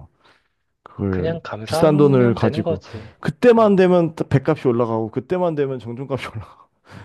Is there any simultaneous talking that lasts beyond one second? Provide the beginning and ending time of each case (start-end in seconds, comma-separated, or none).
1.1-2.8